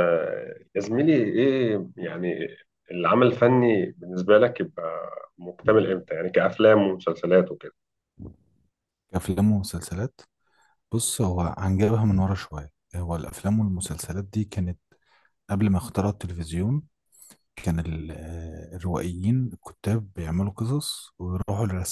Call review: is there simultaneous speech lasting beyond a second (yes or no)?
no